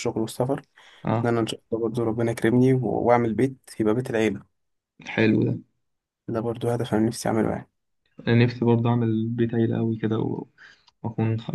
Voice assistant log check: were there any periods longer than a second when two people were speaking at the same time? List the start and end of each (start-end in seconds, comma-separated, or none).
none